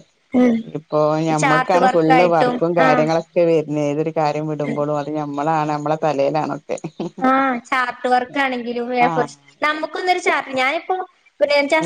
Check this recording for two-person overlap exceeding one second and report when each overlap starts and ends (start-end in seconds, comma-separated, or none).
1.4-3.1